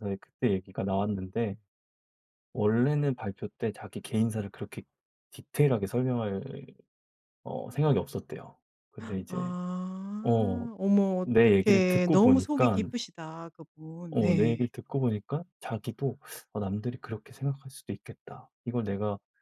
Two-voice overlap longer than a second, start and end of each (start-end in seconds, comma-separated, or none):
11.3-12.8